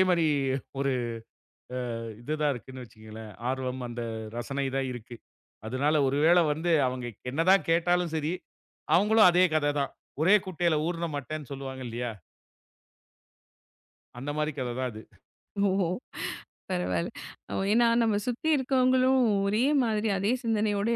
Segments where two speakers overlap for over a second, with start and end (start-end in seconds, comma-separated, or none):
none